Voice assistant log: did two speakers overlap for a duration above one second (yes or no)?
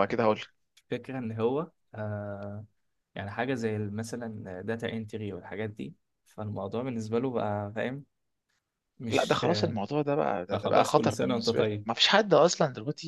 yes